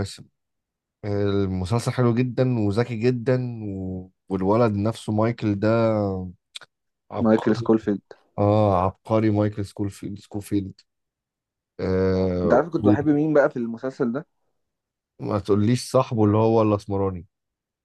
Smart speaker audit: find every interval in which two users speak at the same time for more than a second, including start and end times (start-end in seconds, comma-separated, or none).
none